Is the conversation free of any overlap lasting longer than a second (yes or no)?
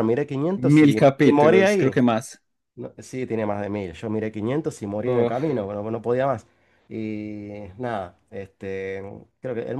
no